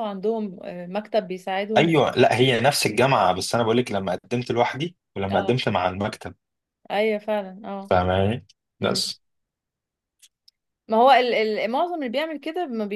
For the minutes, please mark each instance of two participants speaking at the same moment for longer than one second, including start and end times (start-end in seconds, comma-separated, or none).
none